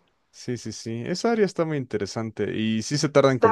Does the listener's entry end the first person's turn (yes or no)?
no